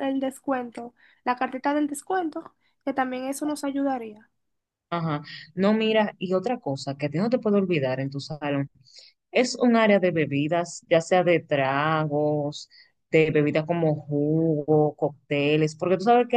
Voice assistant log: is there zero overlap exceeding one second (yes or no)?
yes